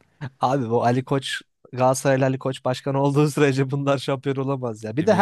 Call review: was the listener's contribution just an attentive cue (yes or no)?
yes